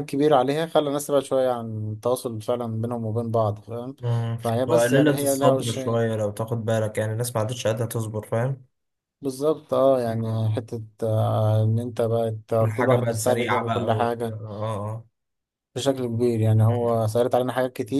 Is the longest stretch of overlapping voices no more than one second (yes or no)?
no